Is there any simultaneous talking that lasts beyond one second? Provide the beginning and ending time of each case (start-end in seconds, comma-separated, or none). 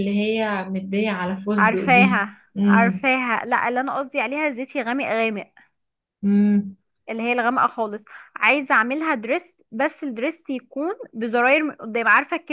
1.6-3.0